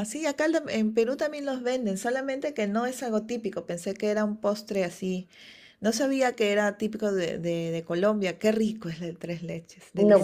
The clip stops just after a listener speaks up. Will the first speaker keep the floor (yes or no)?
no